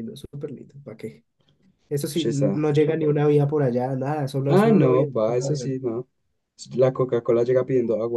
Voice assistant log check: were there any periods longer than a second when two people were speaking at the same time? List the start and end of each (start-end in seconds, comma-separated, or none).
4.5-5.7